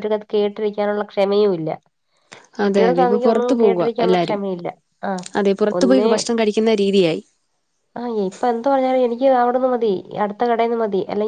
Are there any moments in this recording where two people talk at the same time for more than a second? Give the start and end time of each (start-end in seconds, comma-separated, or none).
2.6-4.4